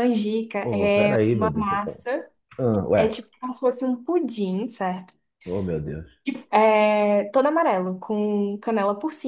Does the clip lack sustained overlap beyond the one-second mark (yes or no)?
no